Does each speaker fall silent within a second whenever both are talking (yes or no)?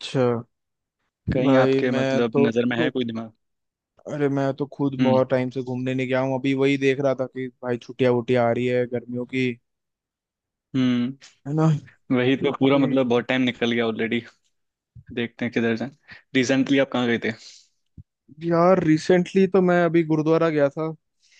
no